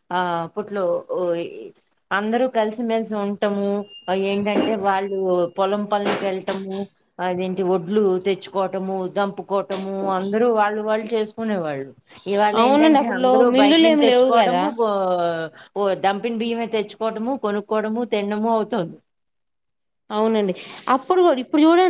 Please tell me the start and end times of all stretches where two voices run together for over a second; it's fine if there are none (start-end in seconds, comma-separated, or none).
12.6-14.6